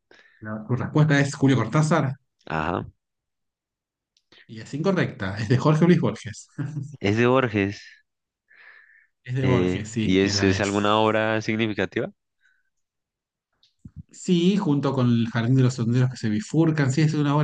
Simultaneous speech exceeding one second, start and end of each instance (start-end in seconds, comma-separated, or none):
9.4-10.7